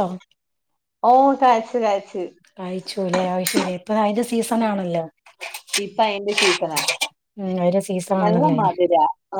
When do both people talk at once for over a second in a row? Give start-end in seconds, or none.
none